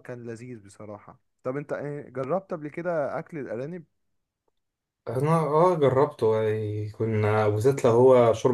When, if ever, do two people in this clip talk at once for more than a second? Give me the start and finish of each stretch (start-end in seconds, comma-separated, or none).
none